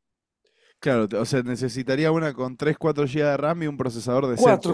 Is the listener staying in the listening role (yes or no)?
no